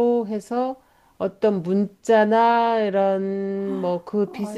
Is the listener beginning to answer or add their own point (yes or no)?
yes